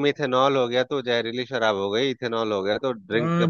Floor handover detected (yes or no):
yes